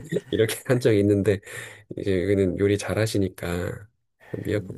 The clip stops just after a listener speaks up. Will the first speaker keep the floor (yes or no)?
yes